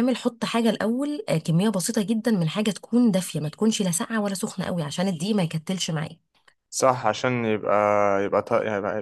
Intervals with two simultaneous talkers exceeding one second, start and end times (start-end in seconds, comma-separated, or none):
none